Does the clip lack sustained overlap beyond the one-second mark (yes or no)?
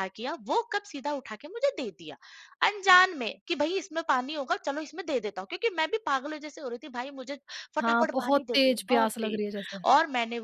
no